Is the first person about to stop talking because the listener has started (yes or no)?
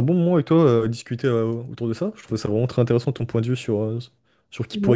no